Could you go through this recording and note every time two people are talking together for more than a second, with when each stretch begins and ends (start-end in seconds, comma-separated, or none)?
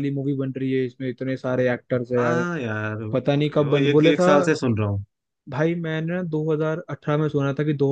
3.1-4.3